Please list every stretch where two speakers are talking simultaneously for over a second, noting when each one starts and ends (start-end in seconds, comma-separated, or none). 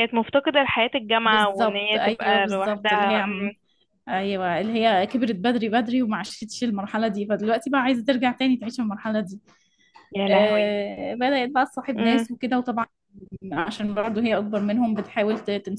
1.2-3.1